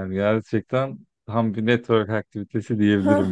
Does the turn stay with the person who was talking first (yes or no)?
no